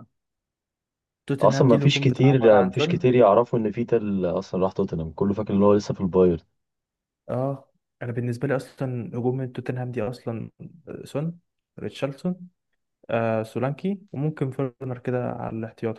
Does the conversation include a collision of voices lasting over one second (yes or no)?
yes